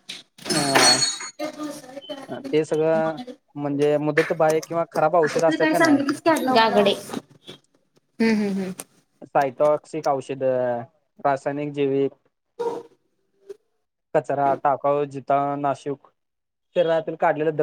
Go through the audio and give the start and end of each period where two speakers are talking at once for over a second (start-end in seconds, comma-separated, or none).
none